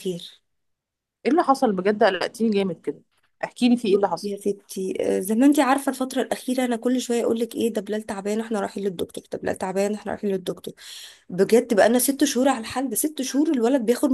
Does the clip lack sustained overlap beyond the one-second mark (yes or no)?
yes